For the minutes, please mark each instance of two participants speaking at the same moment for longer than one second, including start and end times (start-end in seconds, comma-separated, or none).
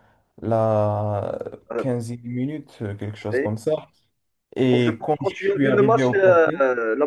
4.7-6.5